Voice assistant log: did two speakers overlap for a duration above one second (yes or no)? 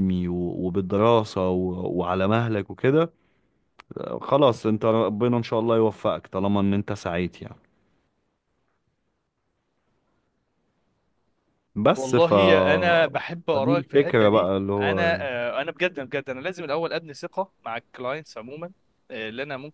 yes